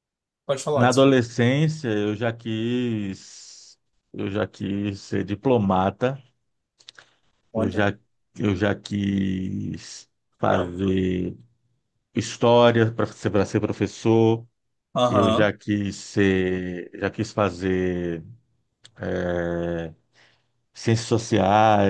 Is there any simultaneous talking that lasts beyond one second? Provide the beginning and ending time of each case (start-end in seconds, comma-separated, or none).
none